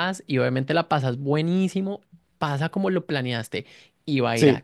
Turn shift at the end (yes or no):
no